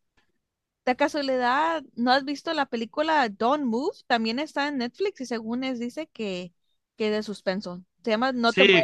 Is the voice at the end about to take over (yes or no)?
yes